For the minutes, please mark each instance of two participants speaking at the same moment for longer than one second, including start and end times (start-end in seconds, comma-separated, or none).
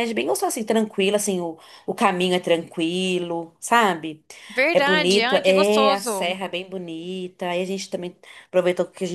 4.7-6.4